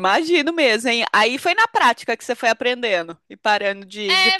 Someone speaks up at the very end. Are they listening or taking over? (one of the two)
taking over